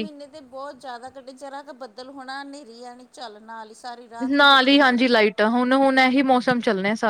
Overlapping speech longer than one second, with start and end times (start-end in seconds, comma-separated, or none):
none